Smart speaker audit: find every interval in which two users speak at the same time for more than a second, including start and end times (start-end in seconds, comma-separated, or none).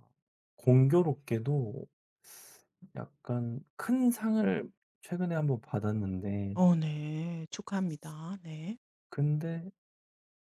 none